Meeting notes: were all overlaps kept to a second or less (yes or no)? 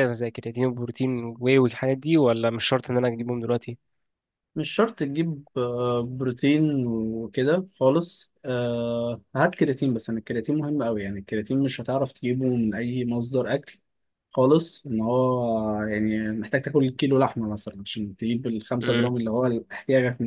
yes